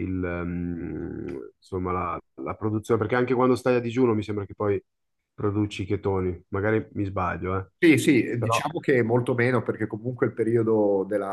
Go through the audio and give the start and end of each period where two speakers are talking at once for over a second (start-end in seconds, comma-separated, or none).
none